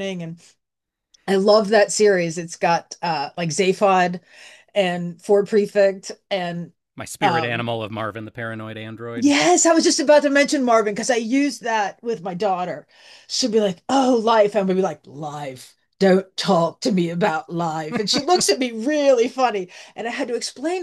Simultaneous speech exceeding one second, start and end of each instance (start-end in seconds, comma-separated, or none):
none